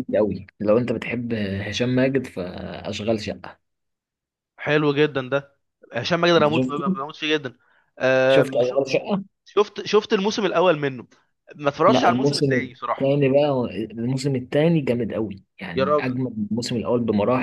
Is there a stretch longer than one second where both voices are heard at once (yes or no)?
yes